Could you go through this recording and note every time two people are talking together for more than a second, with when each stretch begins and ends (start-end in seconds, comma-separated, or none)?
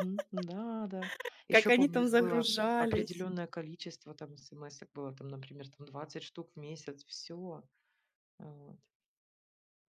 1.5-3.3